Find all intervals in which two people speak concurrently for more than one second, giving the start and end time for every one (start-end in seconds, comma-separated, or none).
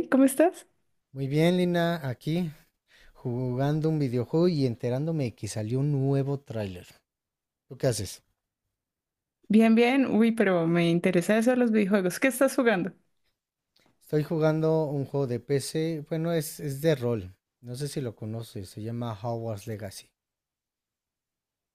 none